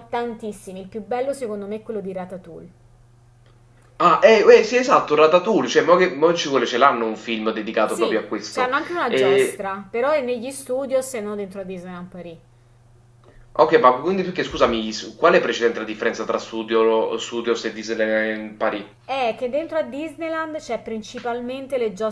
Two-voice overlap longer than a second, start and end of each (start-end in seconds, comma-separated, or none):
7.9-9.7